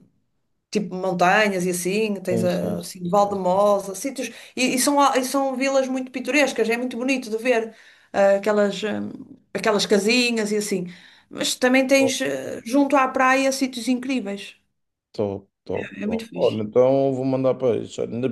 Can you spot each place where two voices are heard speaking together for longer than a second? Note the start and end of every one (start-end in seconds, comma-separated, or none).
2.3-3.6